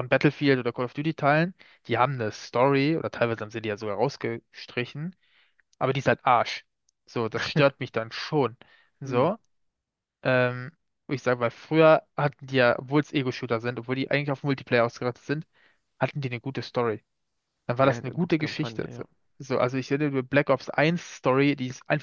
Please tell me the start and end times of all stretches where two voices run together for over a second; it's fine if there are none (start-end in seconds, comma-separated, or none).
17.8-19.0